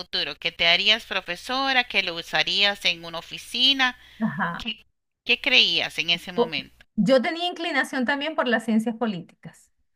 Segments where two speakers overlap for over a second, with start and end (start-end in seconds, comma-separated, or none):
none